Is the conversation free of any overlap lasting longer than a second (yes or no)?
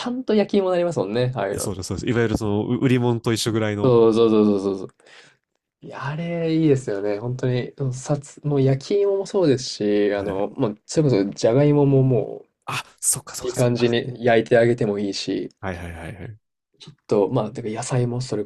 yes